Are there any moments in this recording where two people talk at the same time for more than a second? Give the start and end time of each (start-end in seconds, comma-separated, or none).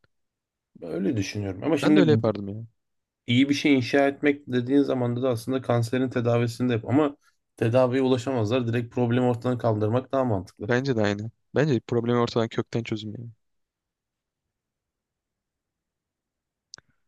none